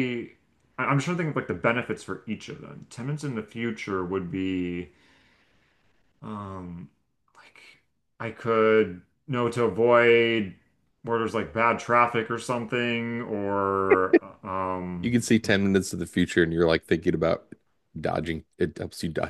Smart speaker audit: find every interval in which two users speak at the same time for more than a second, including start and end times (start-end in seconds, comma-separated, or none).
none